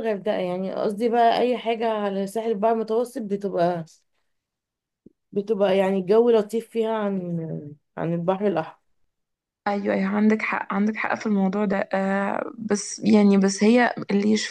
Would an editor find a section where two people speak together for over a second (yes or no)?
no